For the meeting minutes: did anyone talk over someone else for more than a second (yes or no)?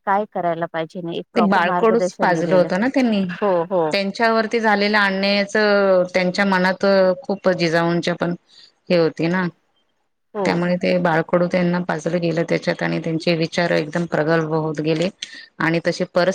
yes